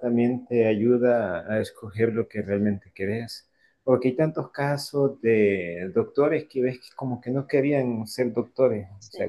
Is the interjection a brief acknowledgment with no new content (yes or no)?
yes